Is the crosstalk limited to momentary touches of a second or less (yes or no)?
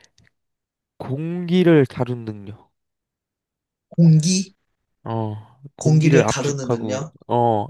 no